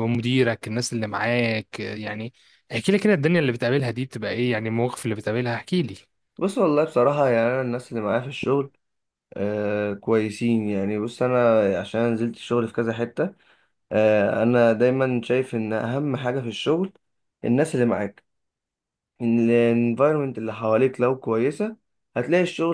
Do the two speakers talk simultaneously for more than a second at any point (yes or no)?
no